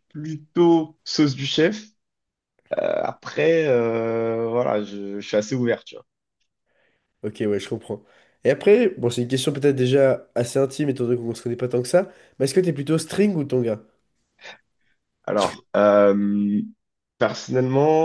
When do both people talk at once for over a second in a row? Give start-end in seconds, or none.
none